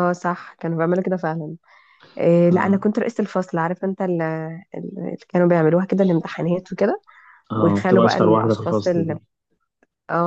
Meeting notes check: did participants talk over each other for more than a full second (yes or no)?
yes